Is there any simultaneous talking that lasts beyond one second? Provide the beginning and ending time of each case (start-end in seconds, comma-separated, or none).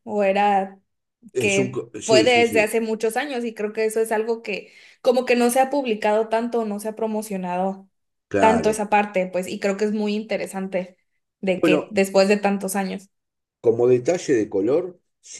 1.4-2.7